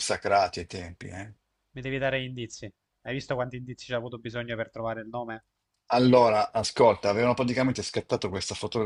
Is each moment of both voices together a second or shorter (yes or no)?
yes